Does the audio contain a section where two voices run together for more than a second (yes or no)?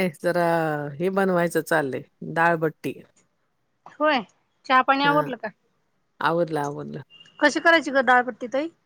no